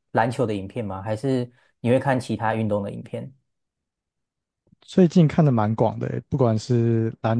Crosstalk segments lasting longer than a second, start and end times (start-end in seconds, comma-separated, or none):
none